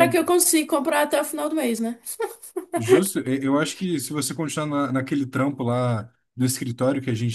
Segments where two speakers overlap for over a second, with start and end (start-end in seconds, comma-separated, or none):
none